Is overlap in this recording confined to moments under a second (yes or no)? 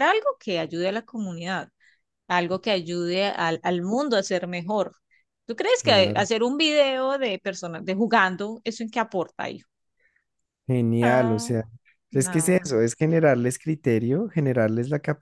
yes